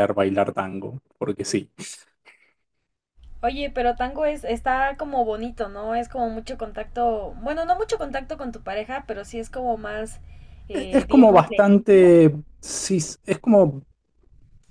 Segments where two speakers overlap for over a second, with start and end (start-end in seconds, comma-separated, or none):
10.7-12.1